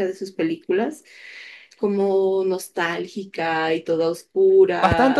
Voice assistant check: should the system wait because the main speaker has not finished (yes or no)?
no